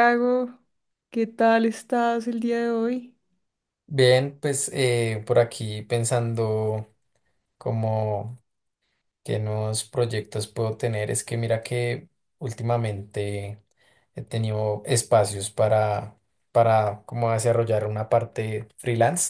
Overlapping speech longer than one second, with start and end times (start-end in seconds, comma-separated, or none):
none